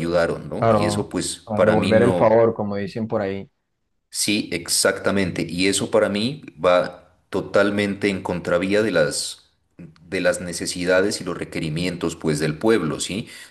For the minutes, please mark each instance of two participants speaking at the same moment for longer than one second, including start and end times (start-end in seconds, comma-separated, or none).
0.6-2.4